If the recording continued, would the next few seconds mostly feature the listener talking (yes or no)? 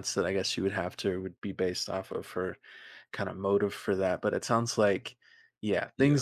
no